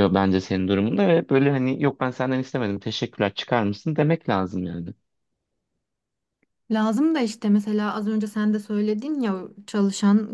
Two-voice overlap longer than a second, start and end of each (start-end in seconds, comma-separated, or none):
none